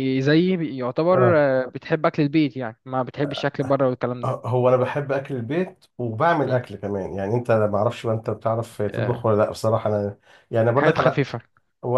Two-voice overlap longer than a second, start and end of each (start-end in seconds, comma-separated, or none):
none